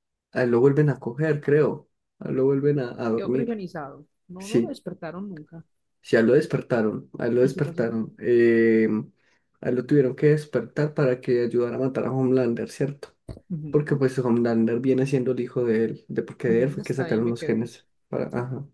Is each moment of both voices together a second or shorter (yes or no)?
no